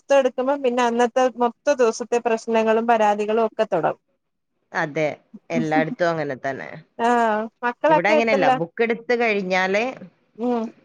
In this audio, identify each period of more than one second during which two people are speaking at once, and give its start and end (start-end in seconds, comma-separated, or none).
none